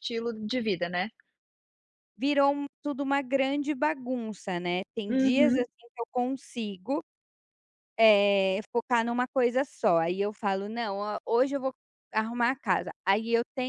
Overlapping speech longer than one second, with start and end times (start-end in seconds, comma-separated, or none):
none